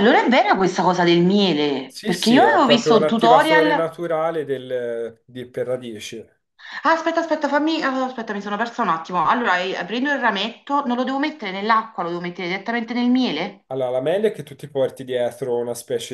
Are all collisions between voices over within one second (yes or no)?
no